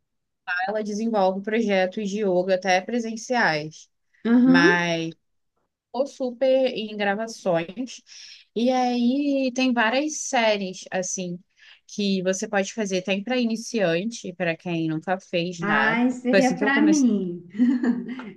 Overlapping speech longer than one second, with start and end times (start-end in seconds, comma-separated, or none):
15.6-17.1